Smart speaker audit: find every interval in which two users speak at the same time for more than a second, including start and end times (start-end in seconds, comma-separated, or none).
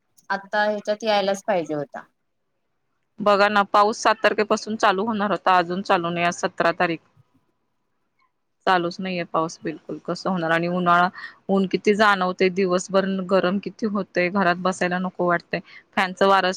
none